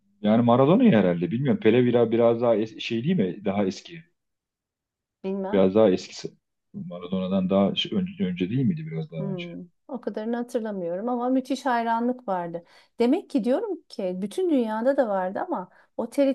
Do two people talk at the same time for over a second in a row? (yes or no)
no